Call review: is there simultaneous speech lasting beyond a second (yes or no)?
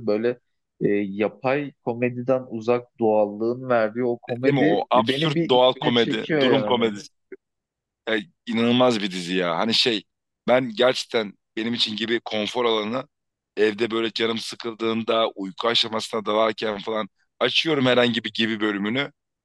yes